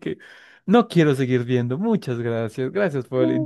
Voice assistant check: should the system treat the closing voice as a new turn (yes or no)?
yes